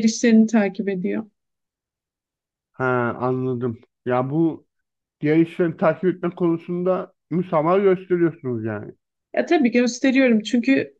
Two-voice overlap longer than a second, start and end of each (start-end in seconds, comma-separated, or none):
none